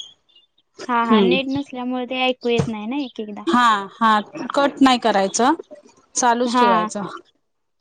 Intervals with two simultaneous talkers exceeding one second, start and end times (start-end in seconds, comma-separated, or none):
none